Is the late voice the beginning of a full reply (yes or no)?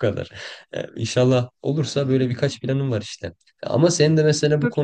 no